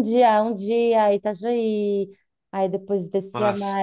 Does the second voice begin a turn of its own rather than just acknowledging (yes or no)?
no